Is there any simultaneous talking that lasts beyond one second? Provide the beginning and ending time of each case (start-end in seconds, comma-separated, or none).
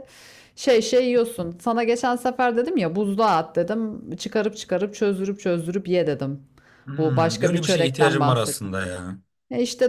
7.0-8.7